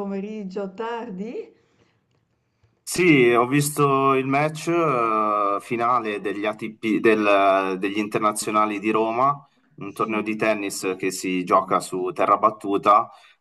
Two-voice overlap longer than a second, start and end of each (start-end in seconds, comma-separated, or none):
none